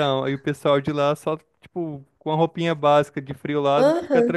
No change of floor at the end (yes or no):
no